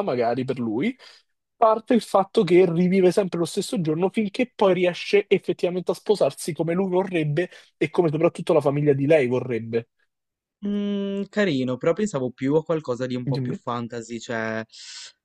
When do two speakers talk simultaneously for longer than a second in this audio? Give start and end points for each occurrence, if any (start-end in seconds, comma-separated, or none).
none